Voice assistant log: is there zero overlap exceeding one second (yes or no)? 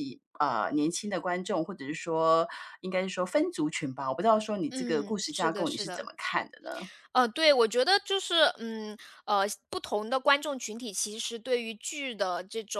no